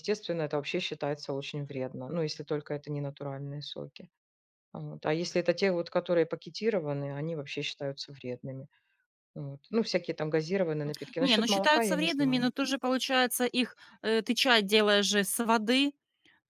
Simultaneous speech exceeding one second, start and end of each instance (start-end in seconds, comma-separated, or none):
11.2-12.5